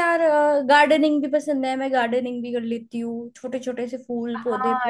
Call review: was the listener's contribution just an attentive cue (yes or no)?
no